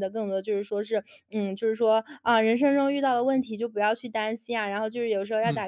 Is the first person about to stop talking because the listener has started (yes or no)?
no